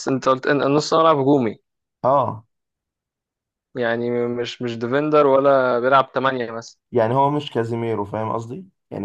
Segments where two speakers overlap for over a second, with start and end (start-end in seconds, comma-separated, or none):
none